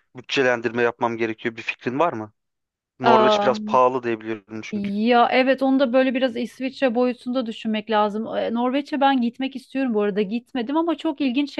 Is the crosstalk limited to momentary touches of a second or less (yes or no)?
yes